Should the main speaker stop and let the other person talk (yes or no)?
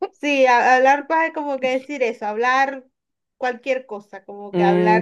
yes